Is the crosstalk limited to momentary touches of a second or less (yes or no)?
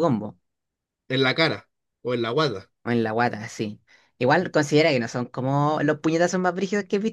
yes